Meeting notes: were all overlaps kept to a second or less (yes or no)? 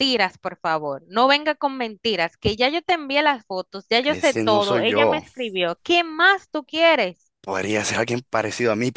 no